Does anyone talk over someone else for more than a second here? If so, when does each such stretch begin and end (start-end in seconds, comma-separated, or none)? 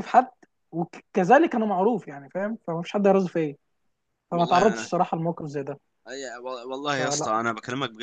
none